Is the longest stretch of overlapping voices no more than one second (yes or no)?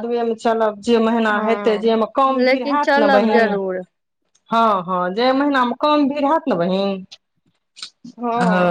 no